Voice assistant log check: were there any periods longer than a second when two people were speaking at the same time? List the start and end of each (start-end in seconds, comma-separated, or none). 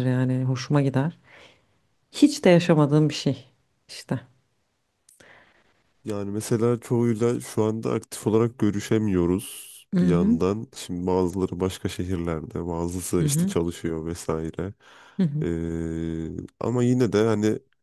none